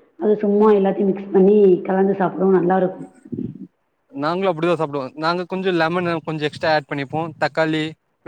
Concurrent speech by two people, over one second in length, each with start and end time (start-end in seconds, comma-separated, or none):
none